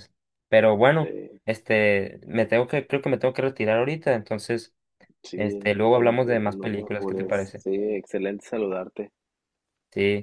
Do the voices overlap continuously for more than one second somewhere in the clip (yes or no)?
yes